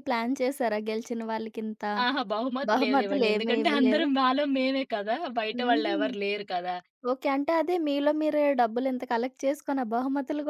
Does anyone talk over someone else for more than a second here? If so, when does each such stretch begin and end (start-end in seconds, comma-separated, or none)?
2.7-4.1